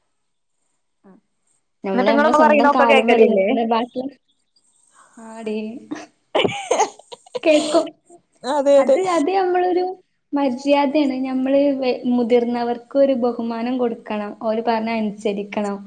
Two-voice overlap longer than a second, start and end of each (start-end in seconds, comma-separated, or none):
1.9-3.5